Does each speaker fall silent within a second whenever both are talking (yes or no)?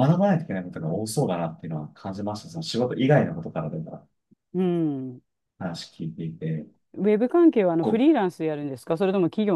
yes